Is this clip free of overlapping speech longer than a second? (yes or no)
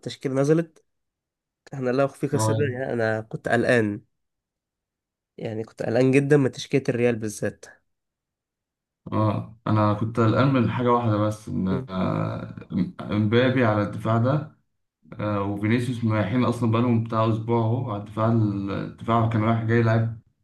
yes